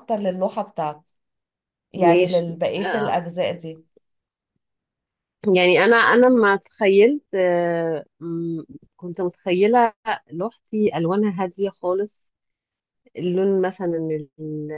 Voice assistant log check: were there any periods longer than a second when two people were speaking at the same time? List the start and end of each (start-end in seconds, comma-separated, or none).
1.9-3.2